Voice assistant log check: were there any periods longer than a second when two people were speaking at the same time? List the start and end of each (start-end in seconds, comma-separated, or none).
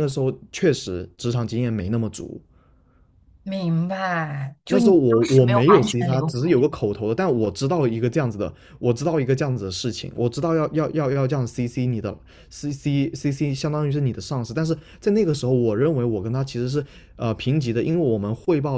4.7-6.6